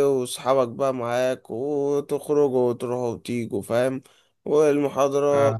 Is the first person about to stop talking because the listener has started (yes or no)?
no